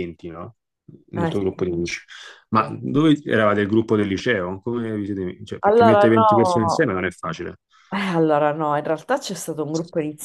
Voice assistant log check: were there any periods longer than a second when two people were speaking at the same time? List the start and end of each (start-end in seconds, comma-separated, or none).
5.6-6.9